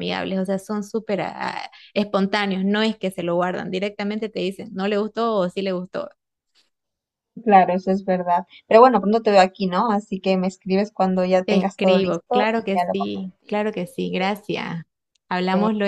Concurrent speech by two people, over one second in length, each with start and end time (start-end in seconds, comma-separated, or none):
11.4-13.7